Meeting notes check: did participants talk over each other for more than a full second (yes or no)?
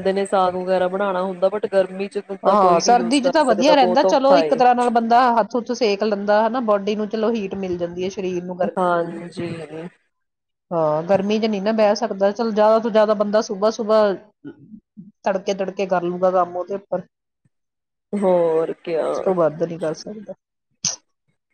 yes